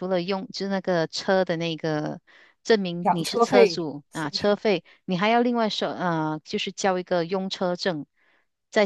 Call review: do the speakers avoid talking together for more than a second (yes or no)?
no